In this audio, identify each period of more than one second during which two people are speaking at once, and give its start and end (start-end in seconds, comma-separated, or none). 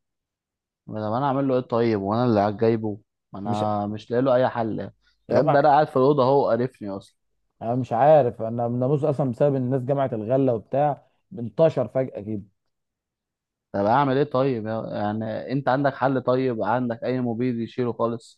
none